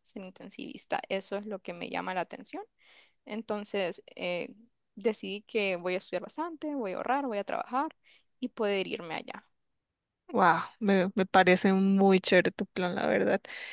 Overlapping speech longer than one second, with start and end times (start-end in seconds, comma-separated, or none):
none